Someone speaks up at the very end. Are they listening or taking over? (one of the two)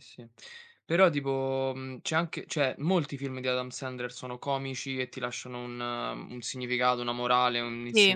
listening